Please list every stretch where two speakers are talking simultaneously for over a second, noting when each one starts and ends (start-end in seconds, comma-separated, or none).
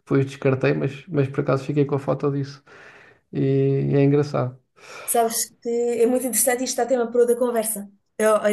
none